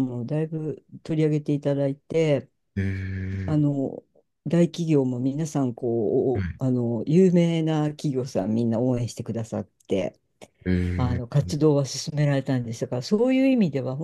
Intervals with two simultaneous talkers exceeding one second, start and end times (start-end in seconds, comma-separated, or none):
none